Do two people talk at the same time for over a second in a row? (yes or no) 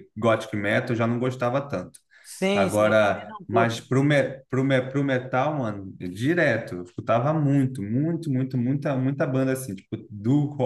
yes